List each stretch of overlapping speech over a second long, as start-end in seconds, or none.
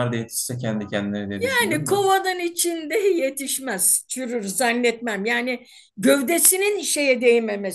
none